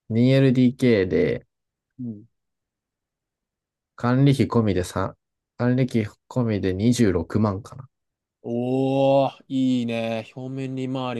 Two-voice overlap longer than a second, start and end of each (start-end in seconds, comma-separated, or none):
none